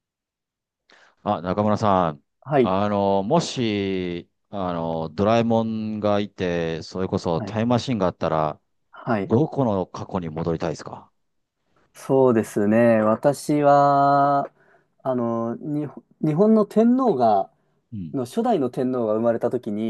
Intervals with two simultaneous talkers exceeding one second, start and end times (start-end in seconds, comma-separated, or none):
none